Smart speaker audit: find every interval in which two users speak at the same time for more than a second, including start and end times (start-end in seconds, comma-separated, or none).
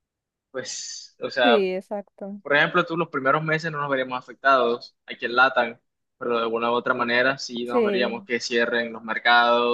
7.0-8.3